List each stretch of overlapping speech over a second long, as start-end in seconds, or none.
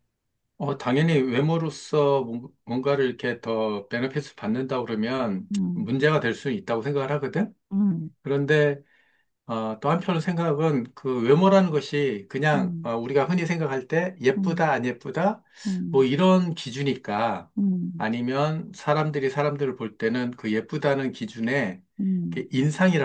none